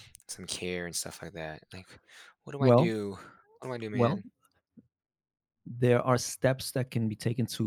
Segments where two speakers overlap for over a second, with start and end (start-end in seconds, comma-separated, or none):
none